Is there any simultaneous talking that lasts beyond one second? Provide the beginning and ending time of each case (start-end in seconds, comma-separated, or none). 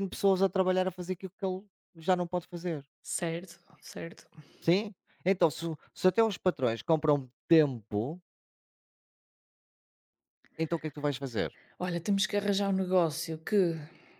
none